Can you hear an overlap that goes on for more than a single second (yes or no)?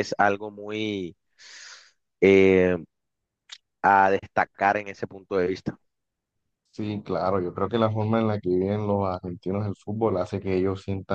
no